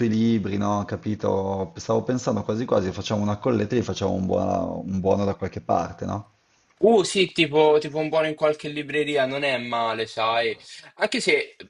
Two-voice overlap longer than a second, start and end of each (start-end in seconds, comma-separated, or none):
none